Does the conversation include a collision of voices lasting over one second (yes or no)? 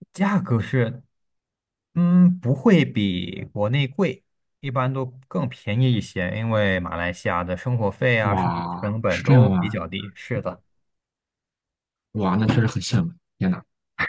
yes